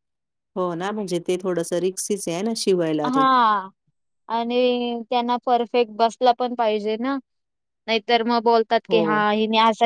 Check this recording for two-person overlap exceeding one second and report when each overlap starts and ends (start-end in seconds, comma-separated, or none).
none